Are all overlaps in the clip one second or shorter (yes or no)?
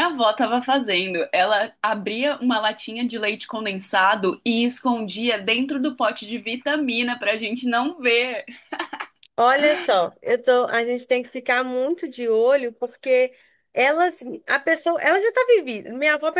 yes